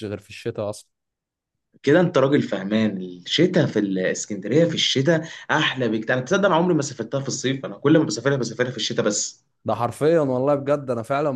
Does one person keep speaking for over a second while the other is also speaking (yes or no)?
no